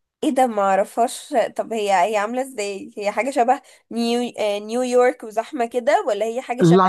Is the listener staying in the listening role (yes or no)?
no